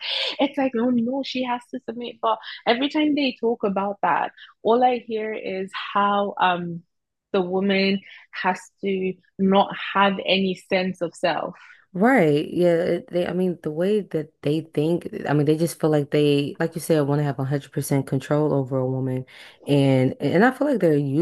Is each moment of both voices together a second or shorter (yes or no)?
yes